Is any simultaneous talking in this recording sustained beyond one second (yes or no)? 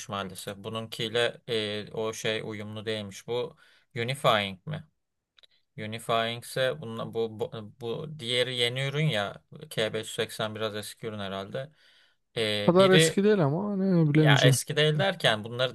no